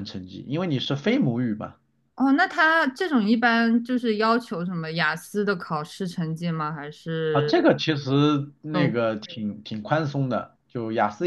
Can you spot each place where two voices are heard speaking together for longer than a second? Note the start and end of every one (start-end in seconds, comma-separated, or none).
none